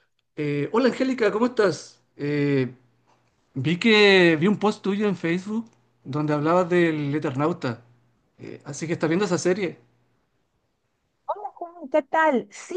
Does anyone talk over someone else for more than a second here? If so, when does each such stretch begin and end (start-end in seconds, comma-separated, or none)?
none